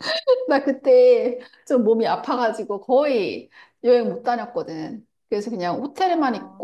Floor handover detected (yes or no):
no